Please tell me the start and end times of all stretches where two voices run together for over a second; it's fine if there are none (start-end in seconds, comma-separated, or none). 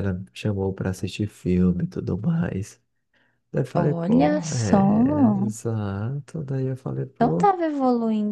3.8-5.4